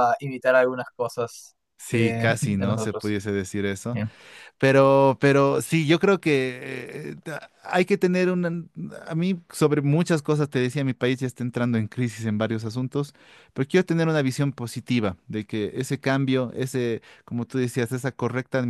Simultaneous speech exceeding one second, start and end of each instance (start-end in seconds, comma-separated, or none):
1.9-3.1